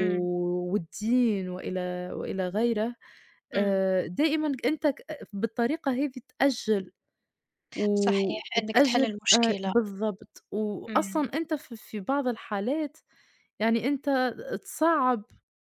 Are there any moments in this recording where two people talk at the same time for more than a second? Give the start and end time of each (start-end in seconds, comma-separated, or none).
7.9-9.7